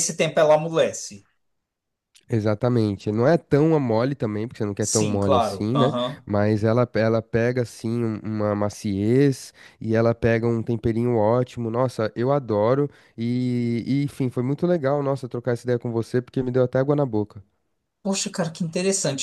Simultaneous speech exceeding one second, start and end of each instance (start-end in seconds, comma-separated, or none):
4.8-6.2